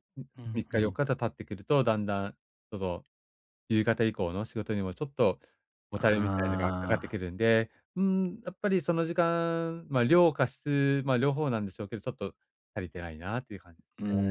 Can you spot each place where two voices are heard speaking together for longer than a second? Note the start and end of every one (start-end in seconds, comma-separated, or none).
5.9-7.2